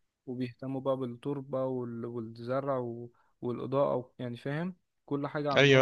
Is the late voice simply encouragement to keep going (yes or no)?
no